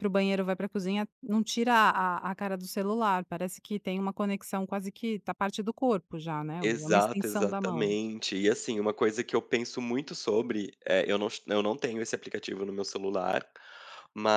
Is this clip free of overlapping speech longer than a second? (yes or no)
no